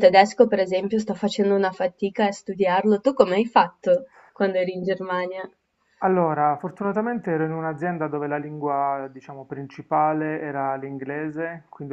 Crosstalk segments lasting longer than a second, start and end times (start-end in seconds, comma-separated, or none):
none